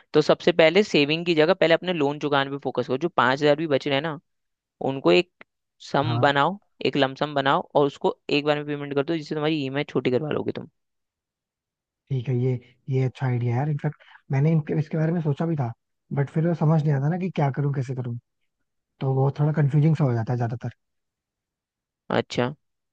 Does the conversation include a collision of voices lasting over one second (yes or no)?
no